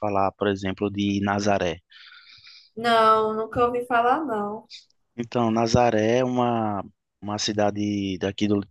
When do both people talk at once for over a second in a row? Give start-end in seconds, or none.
none